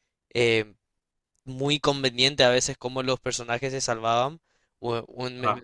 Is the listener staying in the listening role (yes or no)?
yes